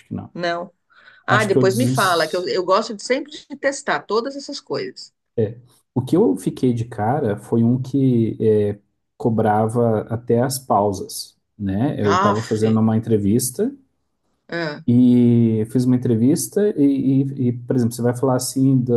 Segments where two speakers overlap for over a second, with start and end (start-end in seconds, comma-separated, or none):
1.3-2.5